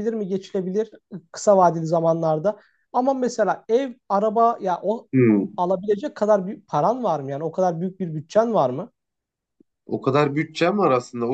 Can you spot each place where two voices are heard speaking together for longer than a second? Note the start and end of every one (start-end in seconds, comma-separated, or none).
none